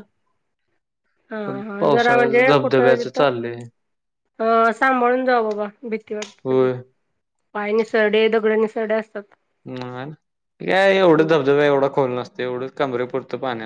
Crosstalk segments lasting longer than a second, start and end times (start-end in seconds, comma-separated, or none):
1.4-3.2